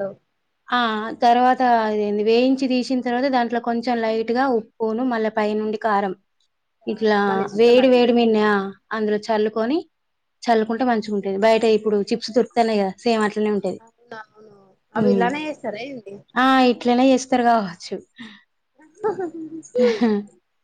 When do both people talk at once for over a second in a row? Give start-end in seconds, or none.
none